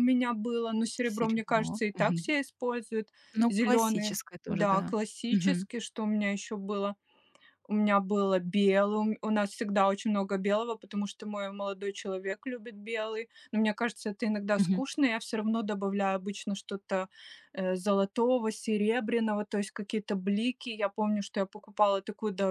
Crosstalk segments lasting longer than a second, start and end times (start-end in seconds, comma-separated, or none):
1.1-2.4, 3.5-5.7